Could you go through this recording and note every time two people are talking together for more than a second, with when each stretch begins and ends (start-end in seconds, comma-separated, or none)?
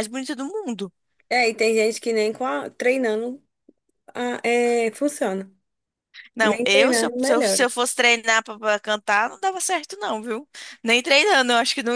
6.4-7.7